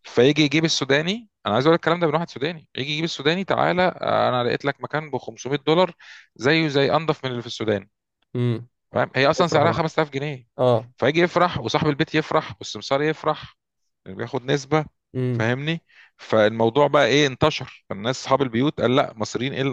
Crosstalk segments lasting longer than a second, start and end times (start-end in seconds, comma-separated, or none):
none